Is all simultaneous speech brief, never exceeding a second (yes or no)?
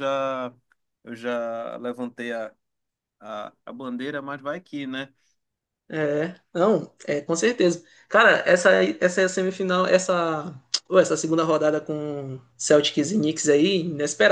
yes